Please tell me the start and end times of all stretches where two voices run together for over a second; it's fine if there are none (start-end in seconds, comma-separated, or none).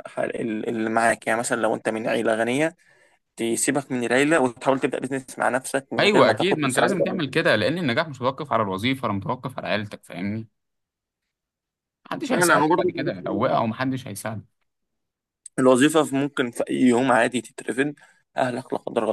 6.0-7.2, 12.3-13.6